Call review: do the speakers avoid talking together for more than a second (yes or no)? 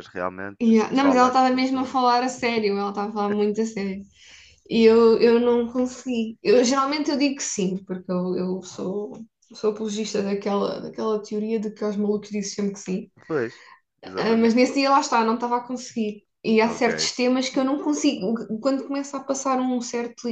no